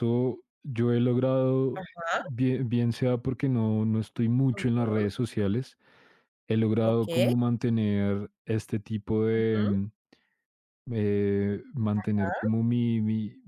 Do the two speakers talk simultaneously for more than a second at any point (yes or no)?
no